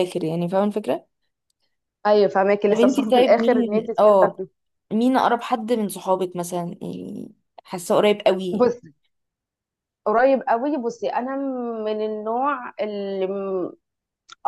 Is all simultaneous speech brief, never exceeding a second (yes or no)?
no